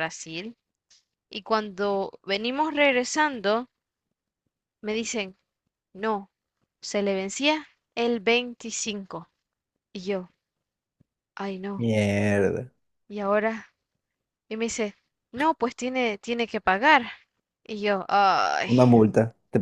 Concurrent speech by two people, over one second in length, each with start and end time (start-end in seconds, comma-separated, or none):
none